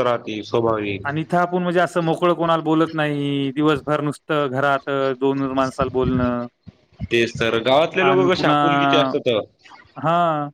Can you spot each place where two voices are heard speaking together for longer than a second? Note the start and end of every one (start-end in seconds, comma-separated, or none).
none